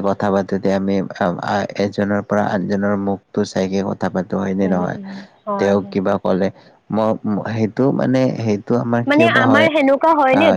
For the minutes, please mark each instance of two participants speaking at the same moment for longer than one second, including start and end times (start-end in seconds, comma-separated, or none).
none